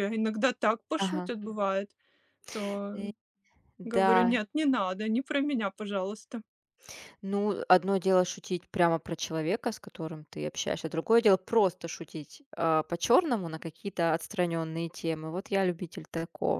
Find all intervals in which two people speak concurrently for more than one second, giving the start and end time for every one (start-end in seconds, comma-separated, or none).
none